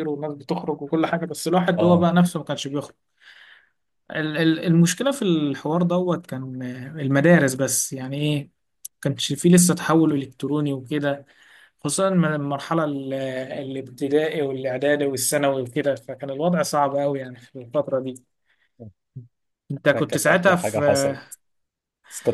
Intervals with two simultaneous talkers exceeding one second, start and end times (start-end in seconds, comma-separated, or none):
19.9-21.2